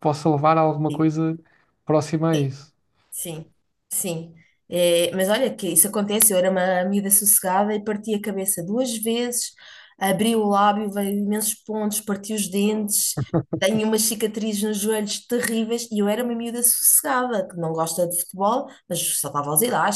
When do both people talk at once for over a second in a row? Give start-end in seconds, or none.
none